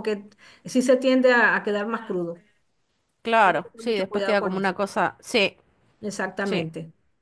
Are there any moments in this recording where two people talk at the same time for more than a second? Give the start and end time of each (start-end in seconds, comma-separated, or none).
3.4-4.7